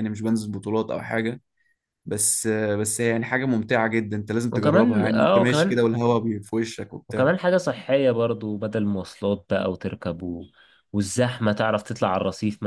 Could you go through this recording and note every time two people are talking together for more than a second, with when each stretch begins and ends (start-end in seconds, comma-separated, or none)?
4.5-5.9